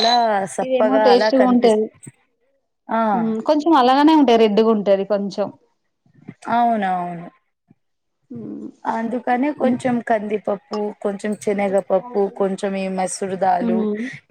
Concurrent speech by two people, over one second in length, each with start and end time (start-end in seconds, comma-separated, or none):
none